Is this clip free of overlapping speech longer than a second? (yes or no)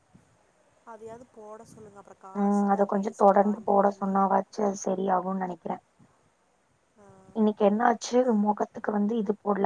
no